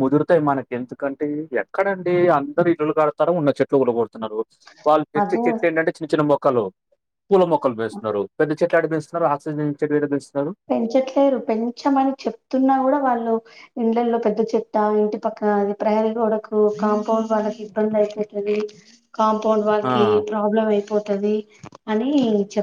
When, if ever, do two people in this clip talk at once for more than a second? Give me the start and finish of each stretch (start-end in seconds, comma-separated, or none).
none